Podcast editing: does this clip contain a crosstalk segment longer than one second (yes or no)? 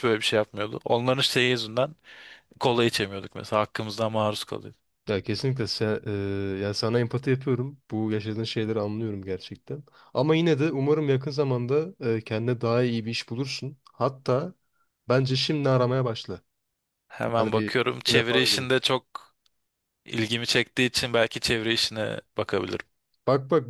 yes